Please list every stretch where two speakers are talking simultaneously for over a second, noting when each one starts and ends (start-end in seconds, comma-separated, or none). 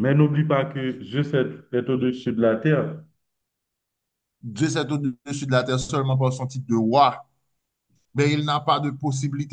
none